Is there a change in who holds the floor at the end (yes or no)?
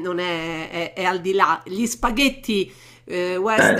no